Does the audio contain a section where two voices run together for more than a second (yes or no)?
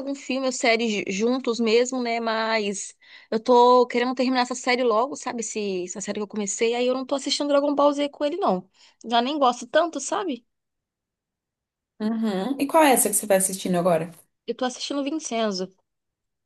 no